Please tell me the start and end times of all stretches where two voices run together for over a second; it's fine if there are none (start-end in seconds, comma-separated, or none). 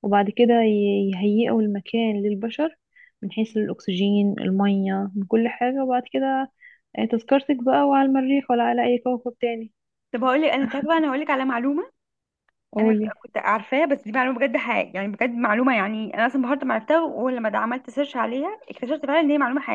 none